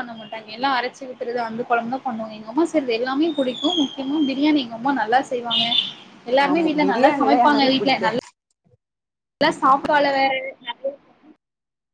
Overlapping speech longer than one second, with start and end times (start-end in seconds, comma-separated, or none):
6.5-8.2